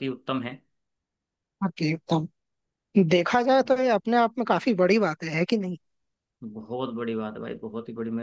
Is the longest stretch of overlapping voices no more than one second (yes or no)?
yes